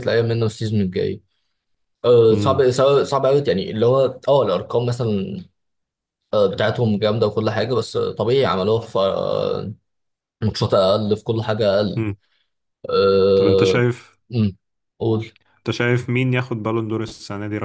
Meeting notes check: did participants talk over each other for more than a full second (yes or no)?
no